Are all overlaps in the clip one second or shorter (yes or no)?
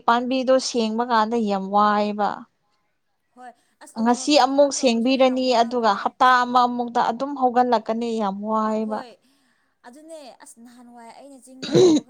no